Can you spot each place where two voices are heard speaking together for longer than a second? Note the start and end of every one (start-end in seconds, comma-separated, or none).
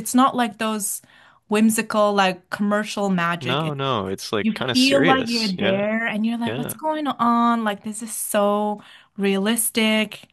4.4-5.8